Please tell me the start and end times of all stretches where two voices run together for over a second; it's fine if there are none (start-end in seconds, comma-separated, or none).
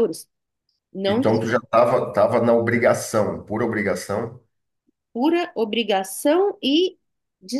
none